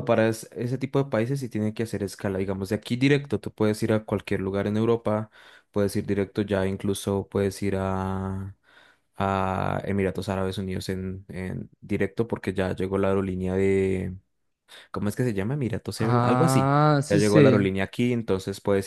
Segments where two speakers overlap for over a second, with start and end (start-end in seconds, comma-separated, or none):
16.0-17.7